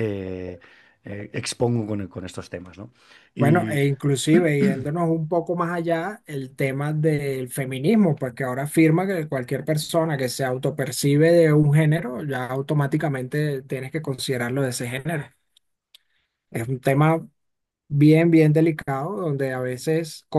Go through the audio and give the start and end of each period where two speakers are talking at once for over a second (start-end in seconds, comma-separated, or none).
none